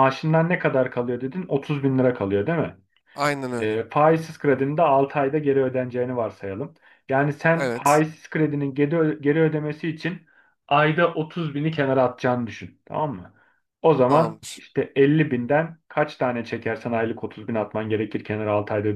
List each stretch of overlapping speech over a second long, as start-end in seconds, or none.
none